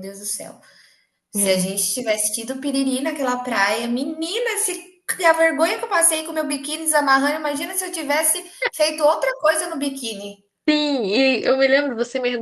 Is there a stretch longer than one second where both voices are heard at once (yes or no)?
no